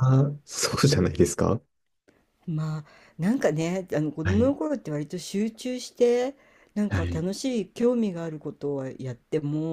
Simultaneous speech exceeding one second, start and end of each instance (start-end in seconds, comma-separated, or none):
none